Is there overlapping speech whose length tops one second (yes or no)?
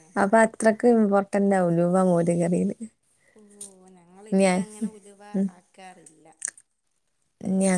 no